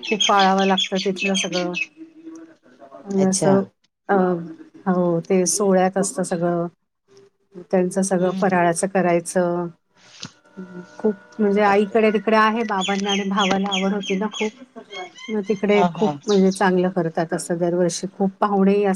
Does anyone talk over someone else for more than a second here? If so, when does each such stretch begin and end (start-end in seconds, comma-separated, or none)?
none